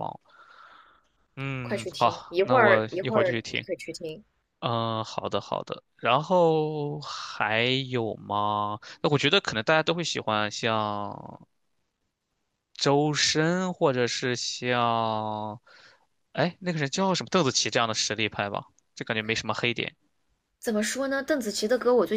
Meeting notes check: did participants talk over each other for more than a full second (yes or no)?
yes